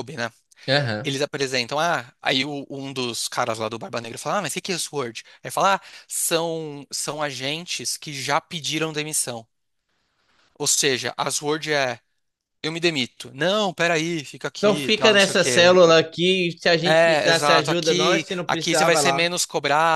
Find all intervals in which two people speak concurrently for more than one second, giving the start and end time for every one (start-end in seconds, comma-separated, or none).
14.6-15.8, 16.9-19.2